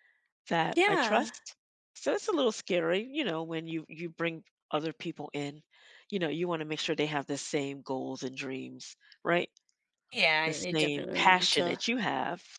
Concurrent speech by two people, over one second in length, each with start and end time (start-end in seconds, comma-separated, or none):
10.4-11.8